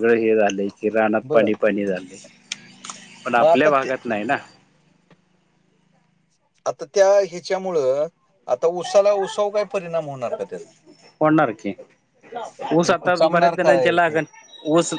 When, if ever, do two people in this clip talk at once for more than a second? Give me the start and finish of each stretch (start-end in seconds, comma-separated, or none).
12.9-14.2